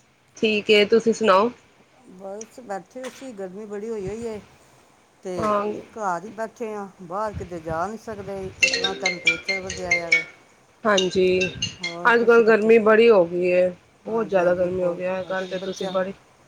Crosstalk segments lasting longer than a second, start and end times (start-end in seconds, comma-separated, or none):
14.1-15.9